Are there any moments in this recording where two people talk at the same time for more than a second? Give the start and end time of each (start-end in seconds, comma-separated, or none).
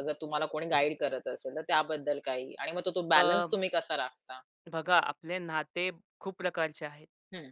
none